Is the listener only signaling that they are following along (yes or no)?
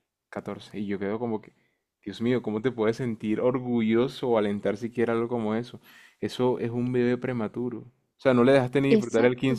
yes